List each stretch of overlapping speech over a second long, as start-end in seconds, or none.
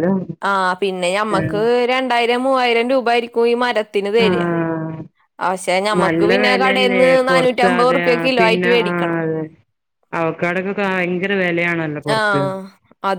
6.0-9.2